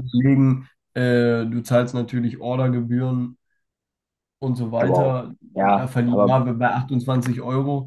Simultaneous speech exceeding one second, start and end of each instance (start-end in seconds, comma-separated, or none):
4.8-6.4